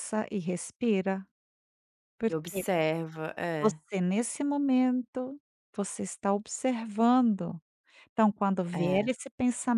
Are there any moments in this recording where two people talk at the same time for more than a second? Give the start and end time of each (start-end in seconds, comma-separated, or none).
none